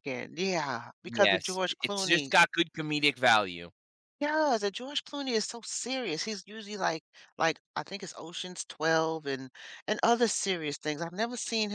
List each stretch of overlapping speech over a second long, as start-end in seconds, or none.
1.1-2.3